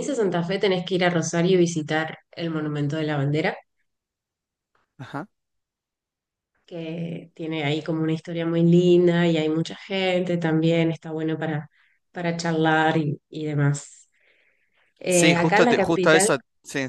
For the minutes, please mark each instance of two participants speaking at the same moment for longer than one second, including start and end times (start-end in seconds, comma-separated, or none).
15.1-16.3